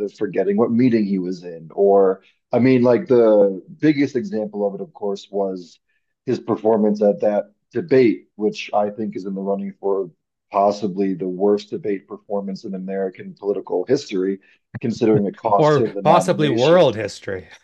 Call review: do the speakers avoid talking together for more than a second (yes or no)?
no